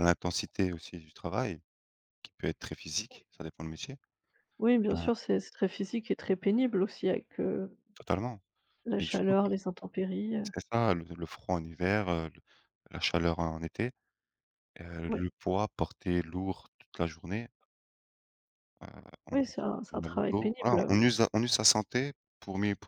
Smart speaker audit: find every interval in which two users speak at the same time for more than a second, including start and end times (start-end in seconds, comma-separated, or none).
19.3-20.9